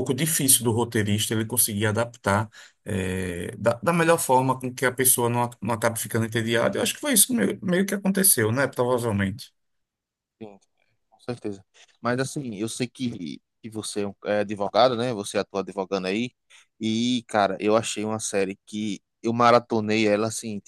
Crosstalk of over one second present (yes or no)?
no